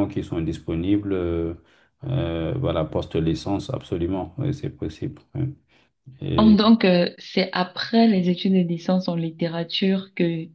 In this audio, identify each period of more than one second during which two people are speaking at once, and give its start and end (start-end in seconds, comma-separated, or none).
none